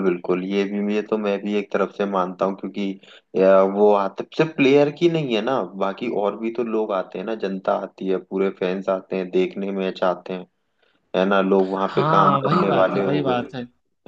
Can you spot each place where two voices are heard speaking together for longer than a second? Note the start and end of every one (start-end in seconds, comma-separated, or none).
11.9-13.4